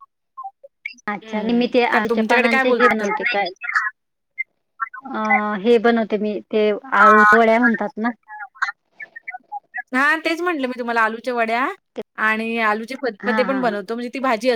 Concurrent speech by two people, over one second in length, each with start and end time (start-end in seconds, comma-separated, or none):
1.2-3.3